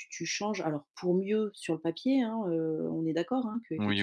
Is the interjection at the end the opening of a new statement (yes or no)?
no